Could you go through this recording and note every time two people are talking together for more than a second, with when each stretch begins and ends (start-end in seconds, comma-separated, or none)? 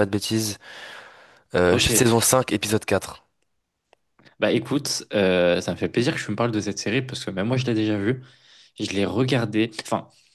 none